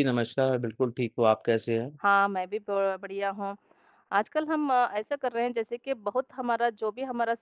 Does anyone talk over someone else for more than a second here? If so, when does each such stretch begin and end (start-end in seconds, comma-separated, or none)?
none